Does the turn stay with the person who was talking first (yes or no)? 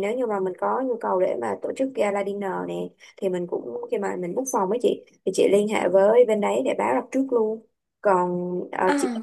yes